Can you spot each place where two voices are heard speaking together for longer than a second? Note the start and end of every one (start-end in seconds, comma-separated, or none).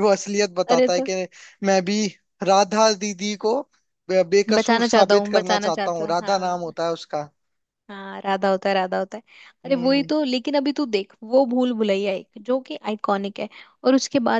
4.6-6.6